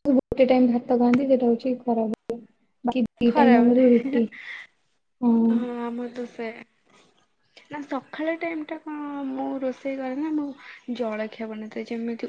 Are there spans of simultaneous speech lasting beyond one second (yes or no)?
no